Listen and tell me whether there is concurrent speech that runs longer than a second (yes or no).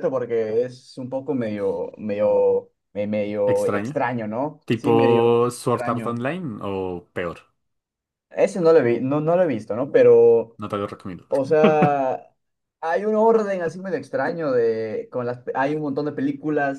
yes